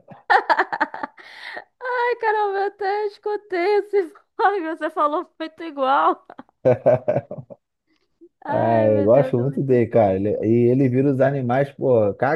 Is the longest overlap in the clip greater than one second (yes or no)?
yes